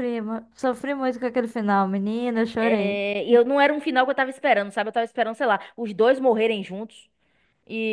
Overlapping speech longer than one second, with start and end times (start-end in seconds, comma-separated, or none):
none